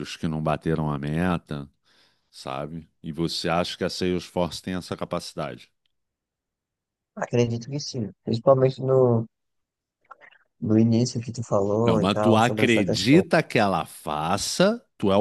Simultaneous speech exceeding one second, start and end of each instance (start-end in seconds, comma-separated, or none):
11.8-13.2